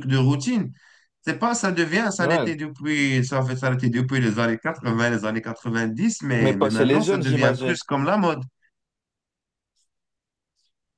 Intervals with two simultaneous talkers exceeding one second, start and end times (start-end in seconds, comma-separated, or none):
6.4-7.8